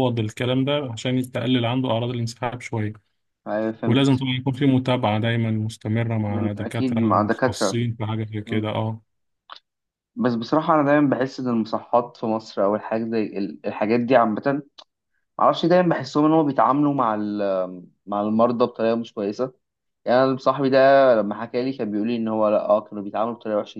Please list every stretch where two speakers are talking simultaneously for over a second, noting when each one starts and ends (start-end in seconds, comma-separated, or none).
6.3-7.8